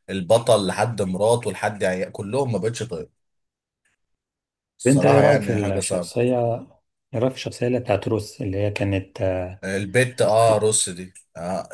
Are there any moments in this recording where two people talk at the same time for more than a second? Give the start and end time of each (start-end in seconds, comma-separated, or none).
4.9-6.1